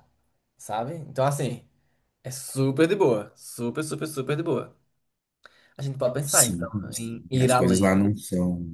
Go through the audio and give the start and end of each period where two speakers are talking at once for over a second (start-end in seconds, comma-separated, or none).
6.3-7.9